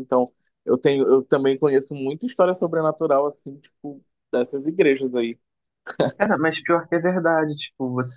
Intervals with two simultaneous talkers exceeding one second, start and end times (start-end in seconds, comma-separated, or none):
none